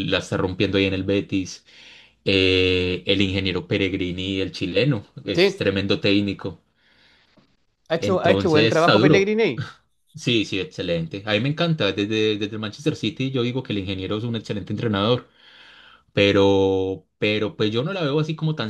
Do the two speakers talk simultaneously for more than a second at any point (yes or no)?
yes